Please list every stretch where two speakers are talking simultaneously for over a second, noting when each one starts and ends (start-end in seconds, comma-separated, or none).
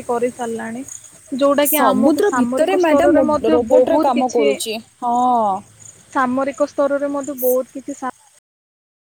1.8-4.6